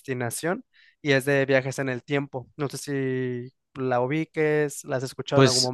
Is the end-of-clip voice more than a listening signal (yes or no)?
yes